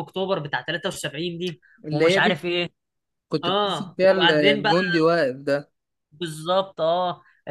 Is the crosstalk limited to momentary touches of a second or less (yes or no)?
no